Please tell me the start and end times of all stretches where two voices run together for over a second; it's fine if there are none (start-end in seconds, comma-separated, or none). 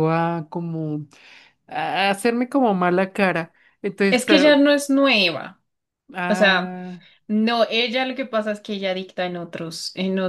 none